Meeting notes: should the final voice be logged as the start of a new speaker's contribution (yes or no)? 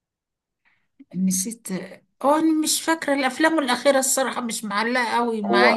yes